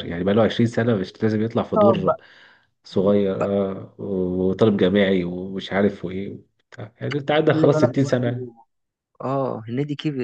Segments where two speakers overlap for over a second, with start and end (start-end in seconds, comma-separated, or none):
7.3-8.5